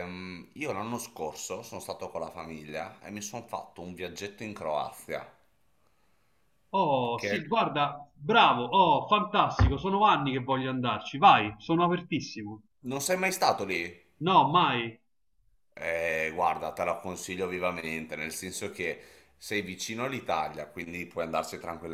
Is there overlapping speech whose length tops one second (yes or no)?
no